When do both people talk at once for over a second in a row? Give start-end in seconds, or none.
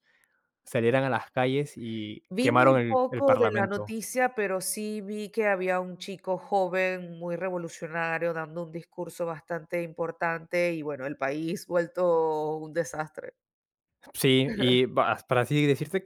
2.3-3.9